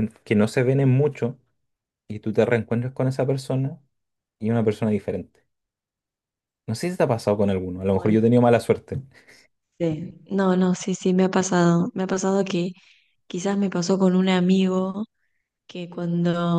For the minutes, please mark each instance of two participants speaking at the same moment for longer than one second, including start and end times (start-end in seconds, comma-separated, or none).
none